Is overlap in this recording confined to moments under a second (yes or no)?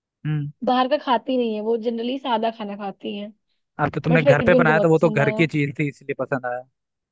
no